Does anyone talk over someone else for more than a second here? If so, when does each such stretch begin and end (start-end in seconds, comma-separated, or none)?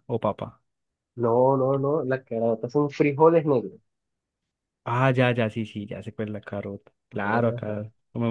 none